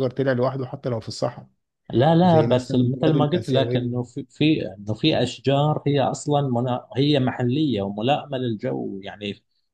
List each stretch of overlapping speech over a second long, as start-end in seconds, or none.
2.2-3.9